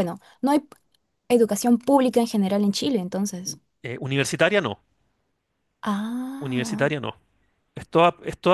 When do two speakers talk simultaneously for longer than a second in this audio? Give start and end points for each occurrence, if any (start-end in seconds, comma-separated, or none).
none